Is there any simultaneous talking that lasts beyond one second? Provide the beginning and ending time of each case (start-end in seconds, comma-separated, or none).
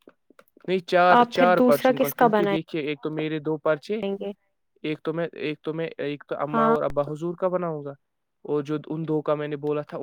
1.0-2.7